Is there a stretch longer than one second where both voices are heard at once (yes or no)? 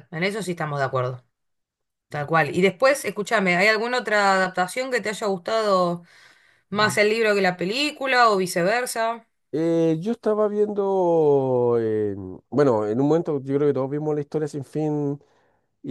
no